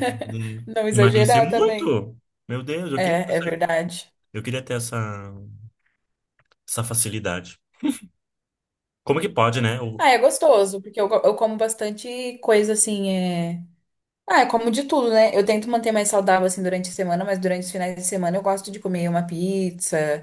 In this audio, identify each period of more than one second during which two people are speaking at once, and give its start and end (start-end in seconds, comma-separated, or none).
0.7-2.0